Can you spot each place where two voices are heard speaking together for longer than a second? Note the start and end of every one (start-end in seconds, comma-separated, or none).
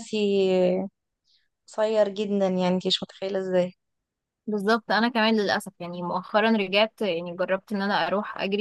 none